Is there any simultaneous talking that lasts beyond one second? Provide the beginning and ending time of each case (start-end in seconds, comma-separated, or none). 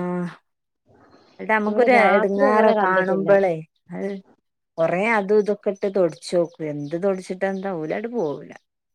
1.7-3.3